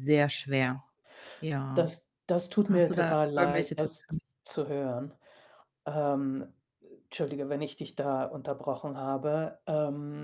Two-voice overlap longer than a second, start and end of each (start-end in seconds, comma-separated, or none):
2.7-4.0